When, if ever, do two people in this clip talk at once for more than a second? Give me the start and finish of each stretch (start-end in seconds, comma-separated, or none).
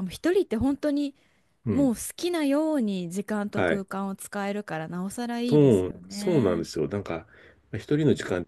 5.5-6.7